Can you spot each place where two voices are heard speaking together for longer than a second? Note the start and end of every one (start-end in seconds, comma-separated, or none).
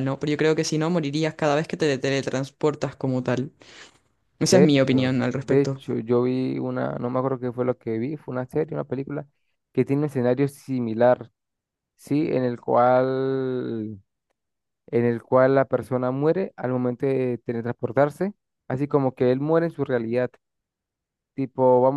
4.5-5.8